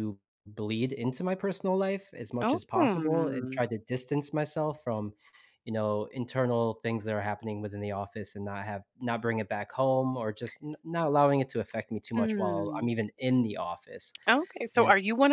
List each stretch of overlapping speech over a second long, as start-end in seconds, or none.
2.4-3.6